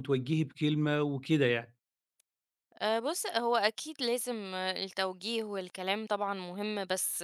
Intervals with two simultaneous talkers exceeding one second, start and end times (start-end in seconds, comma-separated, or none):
none